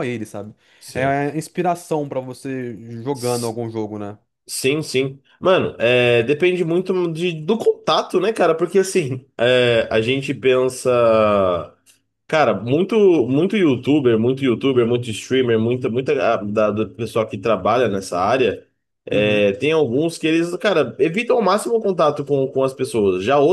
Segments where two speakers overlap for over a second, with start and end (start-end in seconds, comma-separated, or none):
none